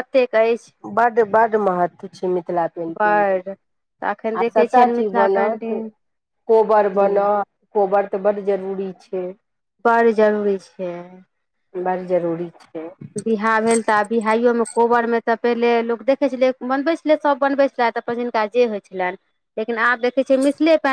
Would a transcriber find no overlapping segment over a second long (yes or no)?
no